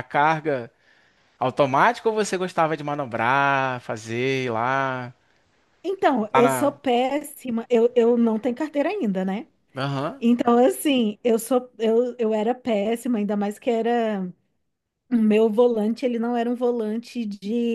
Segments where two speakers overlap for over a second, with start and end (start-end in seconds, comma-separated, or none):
none